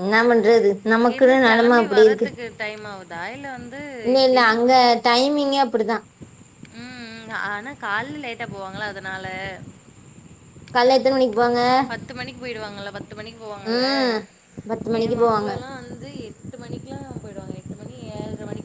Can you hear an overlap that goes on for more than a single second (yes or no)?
yes